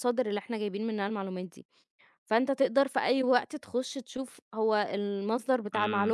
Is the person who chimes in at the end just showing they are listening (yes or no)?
yes